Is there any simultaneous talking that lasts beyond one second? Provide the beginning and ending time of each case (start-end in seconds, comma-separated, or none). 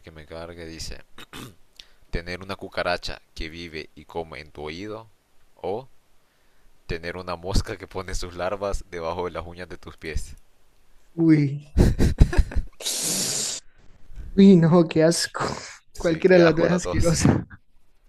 15.9-17.2